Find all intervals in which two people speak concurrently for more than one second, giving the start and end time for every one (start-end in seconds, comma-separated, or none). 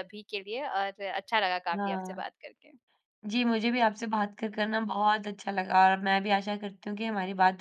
none